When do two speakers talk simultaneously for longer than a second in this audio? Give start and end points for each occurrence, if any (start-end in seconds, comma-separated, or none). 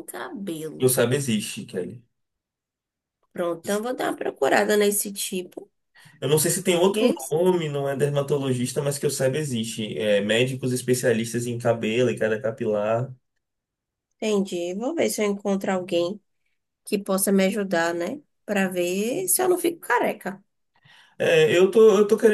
none